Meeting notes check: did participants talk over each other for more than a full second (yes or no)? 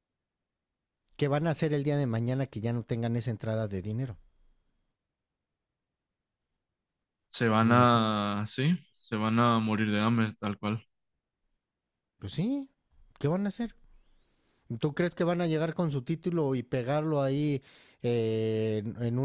no